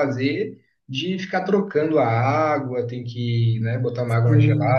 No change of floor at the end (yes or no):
no